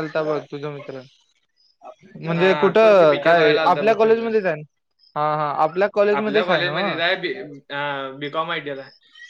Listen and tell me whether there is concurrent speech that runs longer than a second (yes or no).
yes